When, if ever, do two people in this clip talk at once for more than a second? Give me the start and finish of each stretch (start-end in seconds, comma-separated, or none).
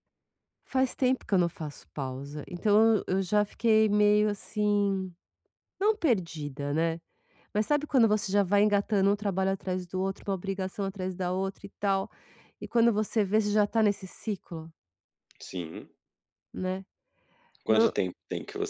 none